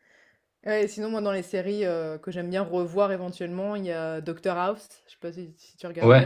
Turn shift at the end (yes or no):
yes